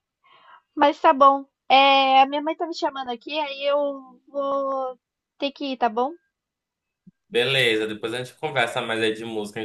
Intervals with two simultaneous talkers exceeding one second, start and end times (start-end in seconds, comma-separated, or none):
none